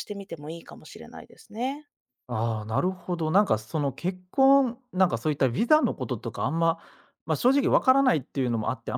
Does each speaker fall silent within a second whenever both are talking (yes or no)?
yes